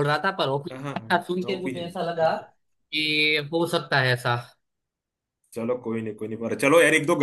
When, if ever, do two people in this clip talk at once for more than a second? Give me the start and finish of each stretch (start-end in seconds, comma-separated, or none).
0.7-1.9